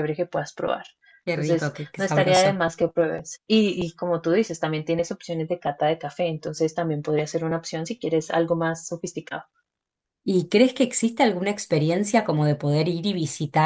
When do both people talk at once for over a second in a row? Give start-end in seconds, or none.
1.3-2.6